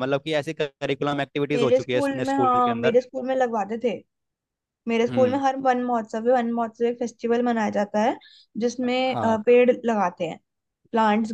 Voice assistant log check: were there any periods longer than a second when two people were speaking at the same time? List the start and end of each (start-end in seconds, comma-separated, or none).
1.5-3.0